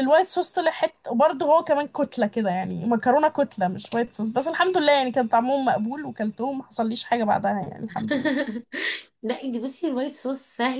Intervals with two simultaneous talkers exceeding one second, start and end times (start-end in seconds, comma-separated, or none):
none